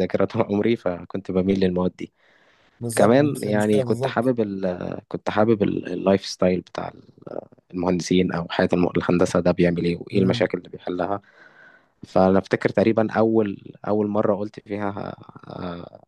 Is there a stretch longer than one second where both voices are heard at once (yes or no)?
yes